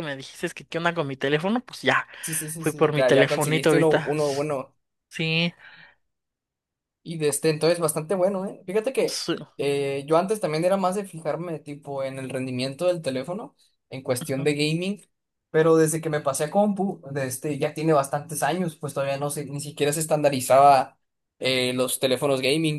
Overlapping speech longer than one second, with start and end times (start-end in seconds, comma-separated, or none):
2.6-4.1